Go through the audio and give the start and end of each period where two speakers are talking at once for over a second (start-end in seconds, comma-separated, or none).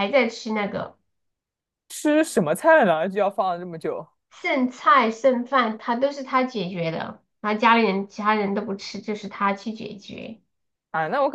none